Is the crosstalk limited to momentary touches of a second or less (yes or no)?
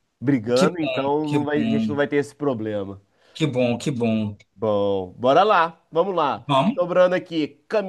no